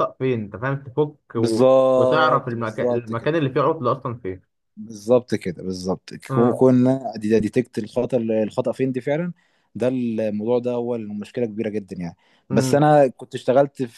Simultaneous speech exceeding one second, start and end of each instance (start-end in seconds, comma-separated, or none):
1.4-3.3